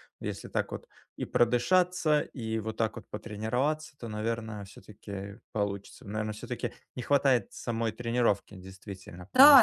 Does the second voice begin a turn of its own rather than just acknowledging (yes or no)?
yes